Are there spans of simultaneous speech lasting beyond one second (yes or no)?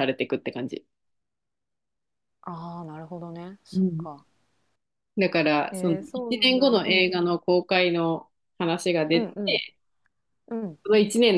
yes